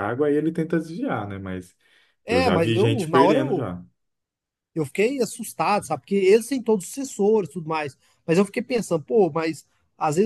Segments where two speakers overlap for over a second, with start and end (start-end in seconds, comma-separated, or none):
2.3-3.6